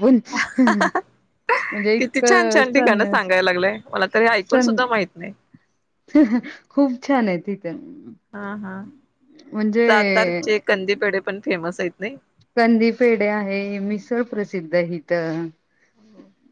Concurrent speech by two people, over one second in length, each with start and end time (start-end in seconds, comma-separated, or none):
2.0-3.3